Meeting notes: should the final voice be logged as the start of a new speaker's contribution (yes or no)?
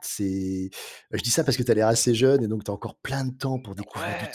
yes